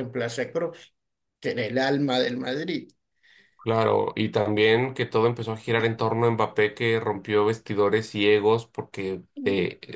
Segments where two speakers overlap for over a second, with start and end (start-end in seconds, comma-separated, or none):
none